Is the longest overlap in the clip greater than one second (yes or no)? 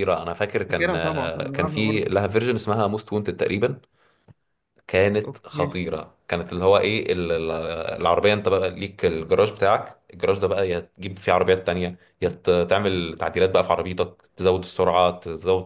yes